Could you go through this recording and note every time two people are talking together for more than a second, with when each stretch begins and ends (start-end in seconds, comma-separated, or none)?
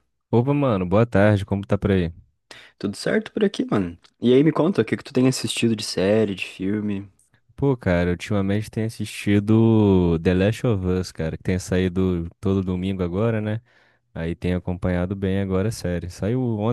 none